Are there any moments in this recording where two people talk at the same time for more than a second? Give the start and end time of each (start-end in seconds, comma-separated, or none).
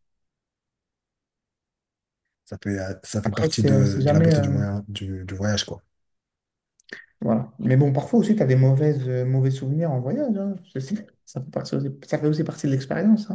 3.2-4.6